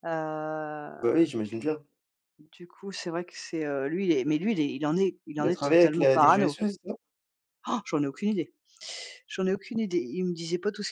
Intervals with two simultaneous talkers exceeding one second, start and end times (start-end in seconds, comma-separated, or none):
5.4-6.6